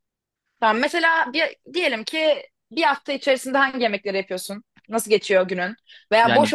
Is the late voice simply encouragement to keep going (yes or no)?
yes